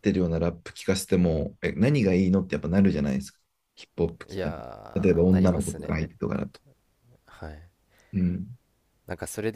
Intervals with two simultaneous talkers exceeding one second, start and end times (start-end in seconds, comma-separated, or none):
4.3-5.9